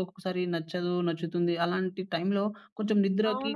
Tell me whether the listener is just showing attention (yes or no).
no